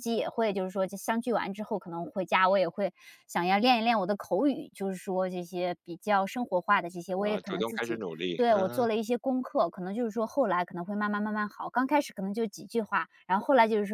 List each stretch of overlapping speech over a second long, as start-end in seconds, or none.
7.2-8.9